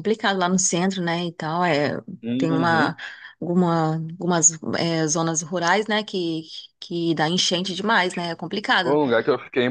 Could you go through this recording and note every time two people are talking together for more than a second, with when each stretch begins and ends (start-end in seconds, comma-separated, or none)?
none